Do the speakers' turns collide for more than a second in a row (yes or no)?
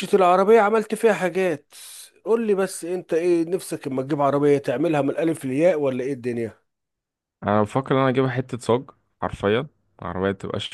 no